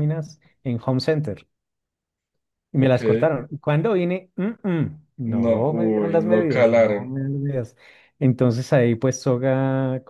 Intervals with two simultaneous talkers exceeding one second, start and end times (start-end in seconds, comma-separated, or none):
5.3-7.1